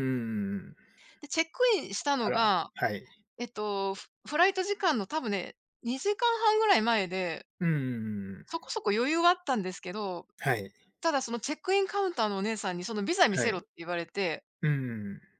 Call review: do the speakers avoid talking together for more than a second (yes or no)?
yes